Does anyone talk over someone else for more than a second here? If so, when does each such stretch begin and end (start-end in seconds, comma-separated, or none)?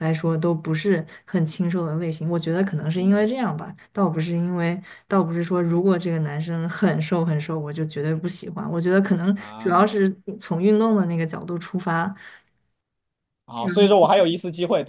none